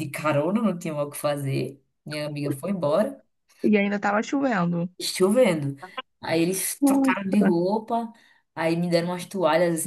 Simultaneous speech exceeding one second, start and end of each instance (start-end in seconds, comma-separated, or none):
none